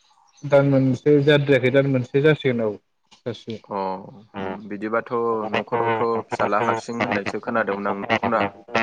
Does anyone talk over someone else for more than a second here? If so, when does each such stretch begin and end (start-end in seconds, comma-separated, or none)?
none